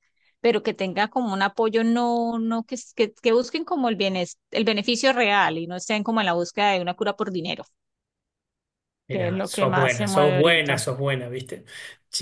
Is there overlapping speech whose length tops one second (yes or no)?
yes